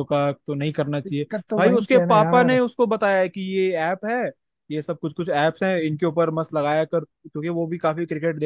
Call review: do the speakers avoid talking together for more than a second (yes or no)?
no